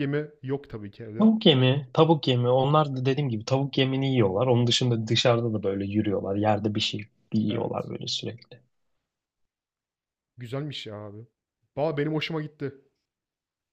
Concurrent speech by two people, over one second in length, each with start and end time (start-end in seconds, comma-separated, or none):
none